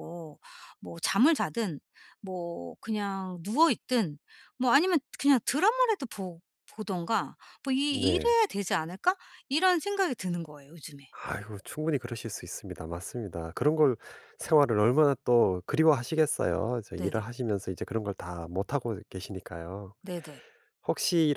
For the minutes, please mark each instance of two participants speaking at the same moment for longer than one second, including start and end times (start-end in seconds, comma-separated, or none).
none